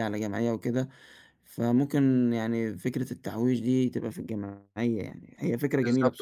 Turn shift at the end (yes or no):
yes